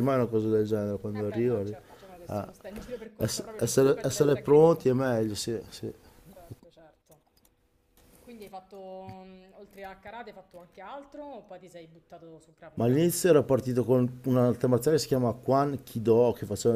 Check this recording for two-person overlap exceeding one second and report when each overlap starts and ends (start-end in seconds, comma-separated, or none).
3.2-4.9